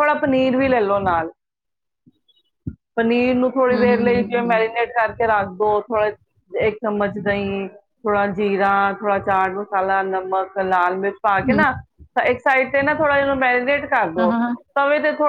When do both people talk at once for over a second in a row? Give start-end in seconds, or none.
3.5-4.8